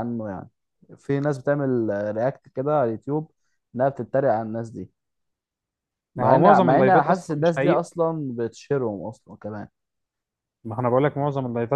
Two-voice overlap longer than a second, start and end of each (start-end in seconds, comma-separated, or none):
6.2-7.8